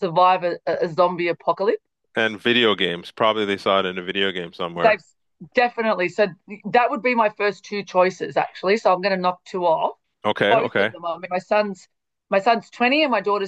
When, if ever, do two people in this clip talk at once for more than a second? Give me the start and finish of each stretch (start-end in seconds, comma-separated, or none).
none